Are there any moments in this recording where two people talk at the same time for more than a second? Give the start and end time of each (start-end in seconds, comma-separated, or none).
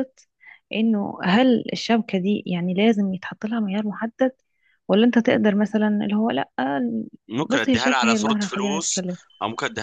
7.5-9.0